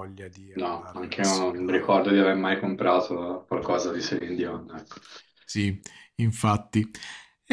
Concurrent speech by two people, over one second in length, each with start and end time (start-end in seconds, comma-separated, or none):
0.5-1.9